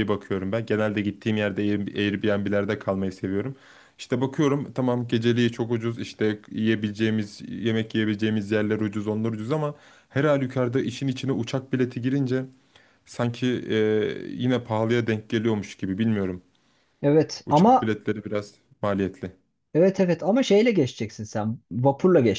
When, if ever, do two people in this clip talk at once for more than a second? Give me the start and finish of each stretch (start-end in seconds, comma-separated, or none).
none